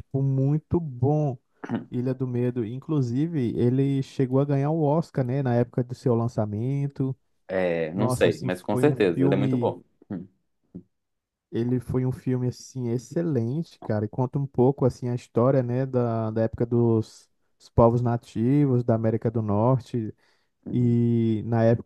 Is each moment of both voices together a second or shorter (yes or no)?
no